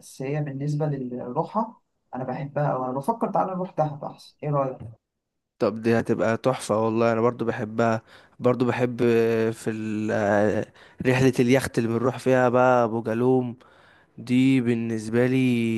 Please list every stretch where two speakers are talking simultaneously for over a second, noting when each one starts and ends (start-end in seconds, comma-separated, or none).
none